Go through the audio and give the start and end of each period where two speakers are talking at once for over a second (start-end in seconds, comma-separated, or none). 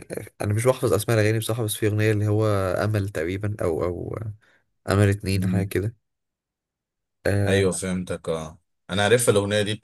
none